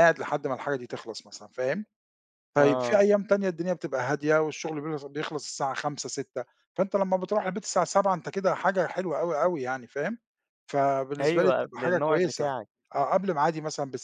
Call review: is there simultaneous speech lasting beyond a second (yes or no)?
yes